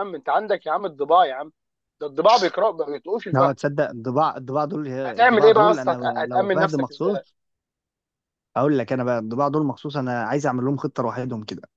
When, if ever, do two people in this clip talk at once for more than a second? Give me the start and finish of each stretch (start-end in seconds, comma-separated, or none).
5.1-7.2